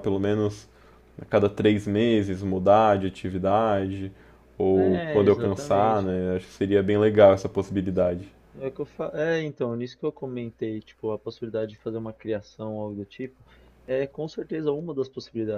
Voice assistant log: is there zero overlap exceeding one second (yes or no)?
no